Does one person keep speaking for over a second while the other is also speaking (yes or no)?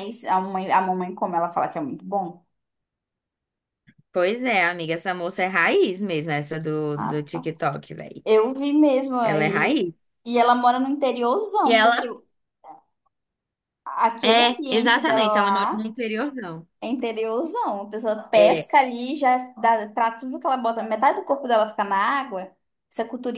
yes